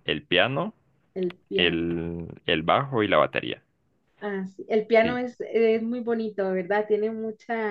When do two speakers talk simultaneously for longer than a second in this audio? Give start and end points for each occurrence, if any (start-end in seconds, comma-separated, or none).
none